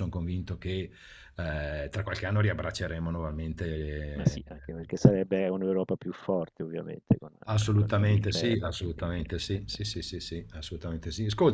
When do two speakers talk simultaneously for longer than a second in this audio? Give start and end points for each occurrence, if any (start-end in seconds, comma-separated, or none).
7.7-9.8